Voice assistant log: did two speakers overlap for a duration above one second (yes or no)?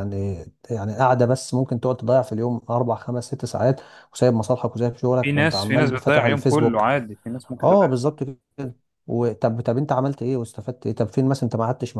yes